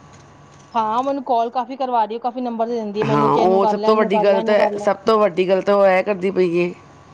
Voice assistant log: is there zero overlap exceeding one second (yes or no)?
no